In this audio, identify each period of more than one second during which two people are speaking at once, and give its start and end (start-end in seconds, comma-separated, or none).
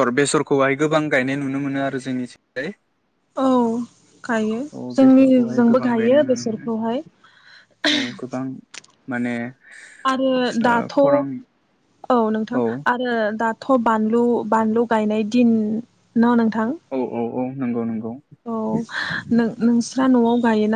5.0-6.7